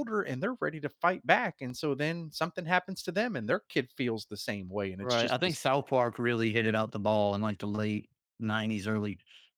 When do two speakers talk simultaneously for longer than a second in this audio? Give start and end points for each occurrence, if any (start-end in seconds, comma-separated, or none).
none